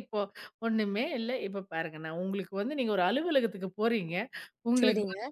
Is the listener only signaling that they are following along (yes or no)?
yes